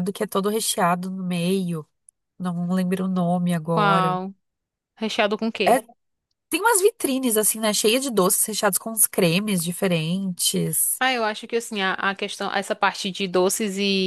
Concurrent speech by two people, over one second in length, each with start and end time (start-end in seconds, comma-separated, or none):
none